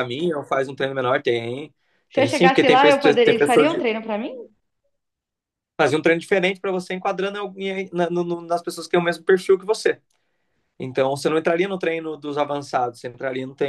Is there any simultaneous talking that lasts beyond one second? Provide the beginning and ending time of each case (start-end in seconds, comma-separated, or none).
2.1-3.9